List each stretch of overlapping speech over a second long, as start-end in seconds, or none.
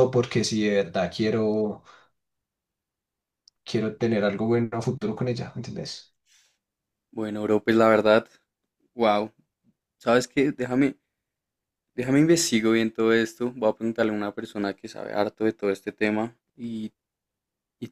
none